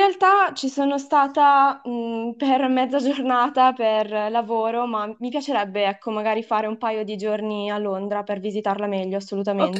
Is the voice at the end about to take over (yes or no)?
yes